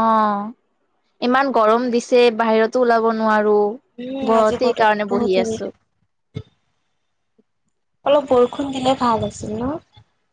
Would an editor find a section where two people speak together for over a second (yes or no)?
yes